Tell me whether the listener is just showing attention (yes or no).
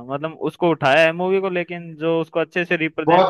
no